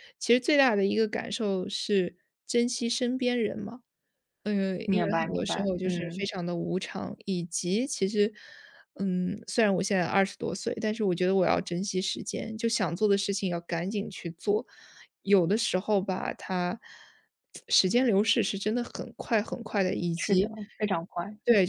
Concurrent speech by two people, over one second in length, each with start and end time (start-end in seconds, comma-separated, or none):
4.8-6.3